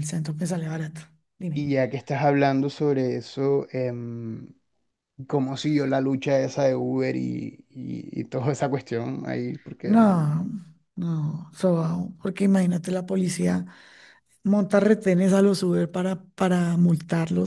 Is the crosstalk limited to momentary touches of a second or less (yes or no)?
yes